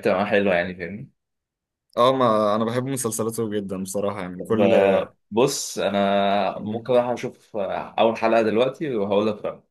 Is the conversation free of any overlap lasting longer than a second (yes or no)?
yes